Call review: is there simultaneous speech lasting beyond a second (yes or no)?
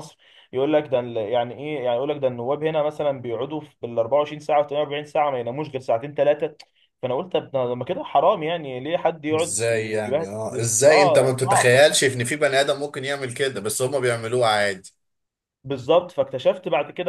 yes